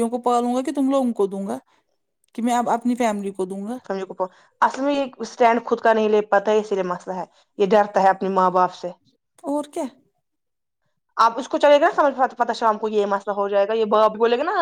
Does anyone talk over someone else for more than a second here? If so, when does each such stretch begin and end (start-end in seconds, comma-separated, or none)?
none